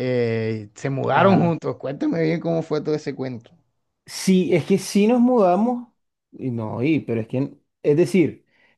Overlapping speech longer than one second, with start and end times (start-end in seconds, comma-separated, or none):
none